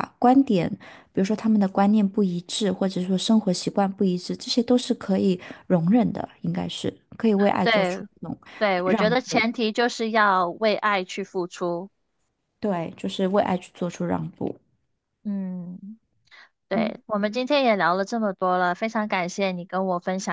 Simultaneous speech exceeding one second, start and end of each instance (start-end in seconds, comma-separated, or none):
none